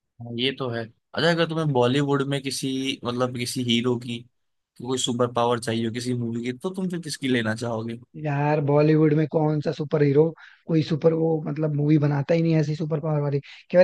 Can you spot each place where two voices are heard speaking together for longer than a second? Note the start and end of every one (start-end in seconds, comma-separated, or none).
none